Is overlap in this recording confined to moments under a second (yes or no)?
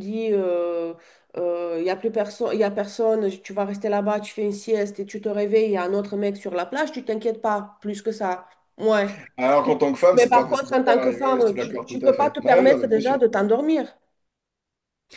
no